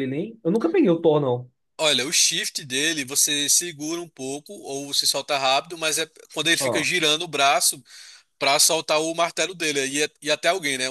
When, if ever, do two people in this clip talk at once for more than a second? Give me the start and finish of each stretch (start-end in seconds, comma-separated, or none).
none